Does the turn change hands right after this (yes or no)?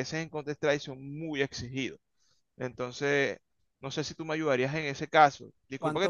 no